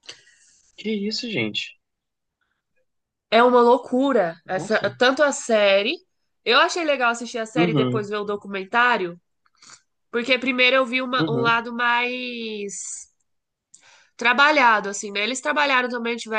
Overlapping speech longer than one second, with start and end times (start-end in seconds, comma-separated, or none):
none